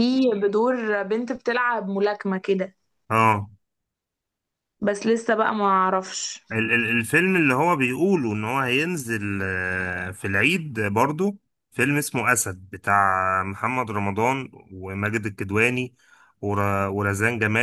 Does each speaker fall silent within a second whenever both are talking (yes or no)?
yes